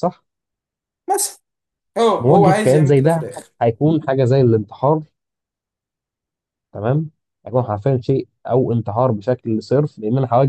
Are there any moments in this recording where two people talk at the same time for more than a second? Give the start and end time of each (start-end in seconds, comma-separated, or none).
2.2-3.5